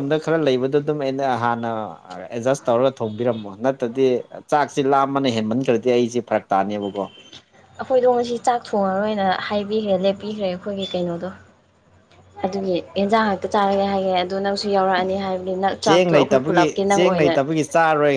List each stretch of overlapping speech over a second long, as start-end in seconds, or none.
15.9-17.3